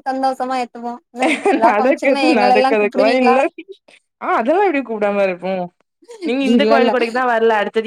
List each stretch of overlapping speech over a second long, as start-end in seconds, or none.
1.7-3.4